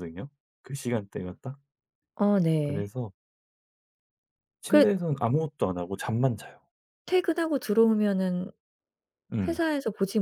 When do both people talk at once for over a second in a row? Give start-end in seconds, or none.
none